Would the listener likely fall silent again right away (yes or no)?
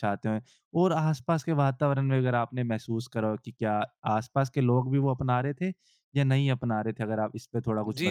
no